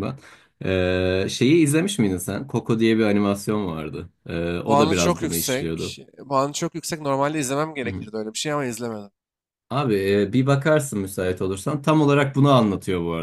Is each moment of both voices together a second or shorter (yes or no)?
no